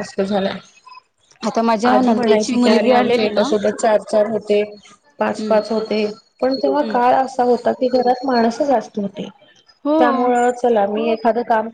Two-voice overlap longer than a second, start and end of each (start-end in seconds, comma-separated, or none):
1.9-3.4